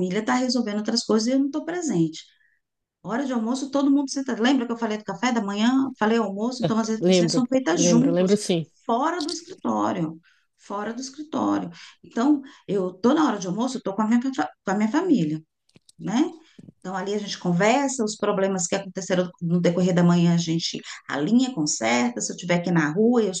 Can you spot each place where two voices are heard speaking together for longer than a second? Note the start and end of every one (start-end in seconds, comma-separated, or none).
7.0-8.3